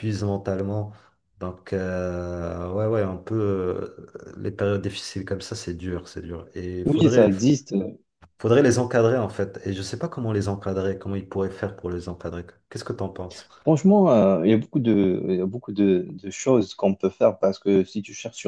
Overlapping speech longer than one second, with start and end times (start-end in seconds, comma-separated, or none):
none